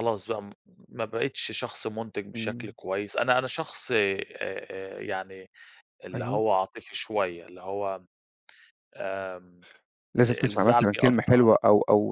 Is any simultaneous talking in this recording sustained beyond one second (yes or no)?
yes